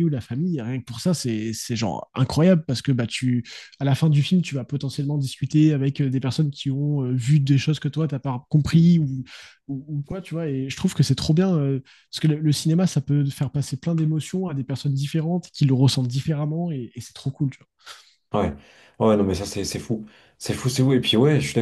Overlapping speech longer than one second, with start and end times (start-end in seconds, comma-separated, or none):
none